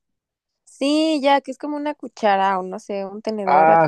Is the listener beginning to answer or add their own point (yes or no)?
yes